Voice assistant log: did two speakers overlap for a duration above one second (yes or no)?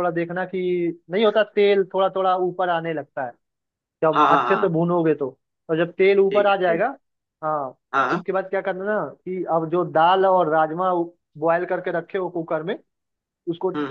no